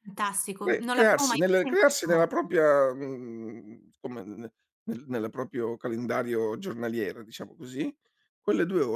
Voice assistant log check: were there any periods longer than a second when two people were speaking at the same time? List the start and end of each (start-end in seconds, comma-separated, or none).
0.6-2.5